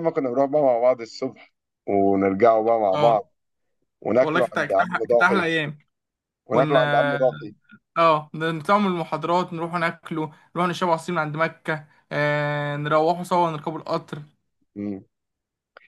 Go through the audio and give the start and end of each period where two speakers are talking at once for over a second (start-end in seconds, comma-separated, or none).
4.2-5.5